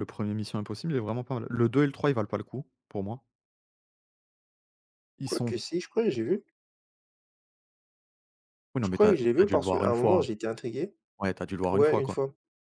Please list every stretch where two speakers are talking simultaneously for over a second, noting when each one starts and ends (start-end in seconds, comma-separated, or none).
8.8-10.2